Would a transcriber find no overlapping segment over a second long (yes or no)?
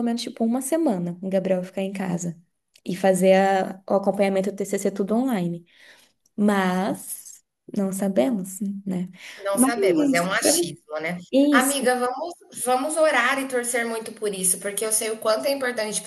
yes